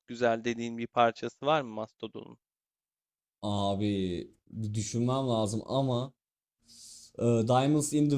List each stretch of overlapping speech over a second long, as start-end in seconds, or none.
none